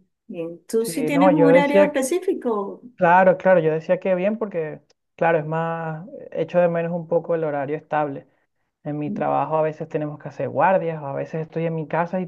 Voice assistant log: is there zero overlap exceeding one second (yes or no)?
no